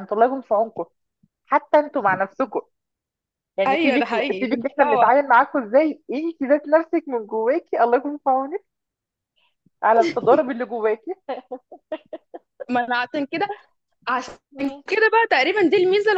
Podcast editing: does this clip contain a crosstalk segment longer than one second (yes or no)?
yes